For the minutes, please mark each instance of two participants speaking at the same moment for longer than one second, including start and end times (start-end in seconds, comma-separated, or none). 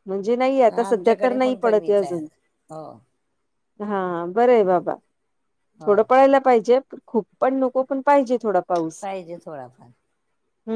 0.9-2.3